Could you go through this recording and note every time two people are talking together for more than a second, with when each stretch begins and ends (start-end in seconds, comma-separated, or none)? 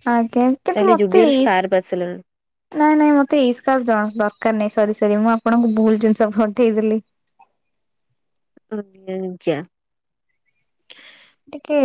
0.8-2.2